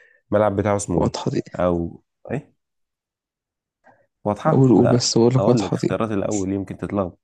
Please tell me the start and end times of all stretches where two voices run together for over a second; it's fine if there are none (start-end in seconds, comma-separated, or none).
4.5-5.9